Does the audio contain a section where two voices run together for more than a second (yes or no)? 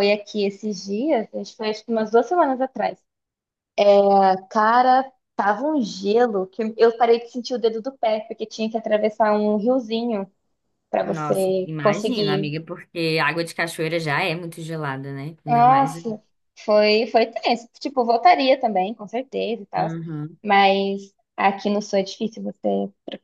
yes